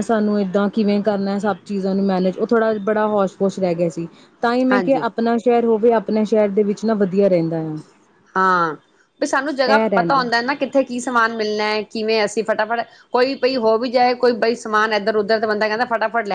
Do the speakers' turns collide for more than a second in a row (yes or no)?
no